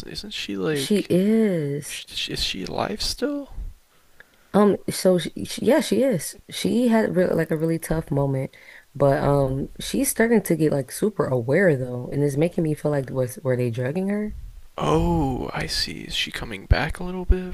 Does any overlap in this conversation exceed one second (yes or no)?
no